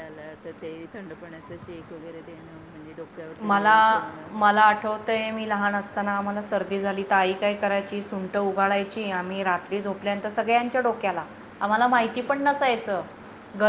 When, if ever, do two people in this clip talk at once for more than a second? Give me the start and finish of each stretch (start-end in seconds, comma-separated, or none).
none